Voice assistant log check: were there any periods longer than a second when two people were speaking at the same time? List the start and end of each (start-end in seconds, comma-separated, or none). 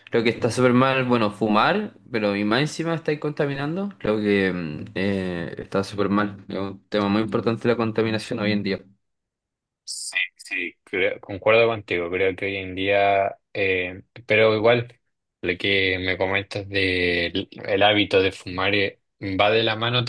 none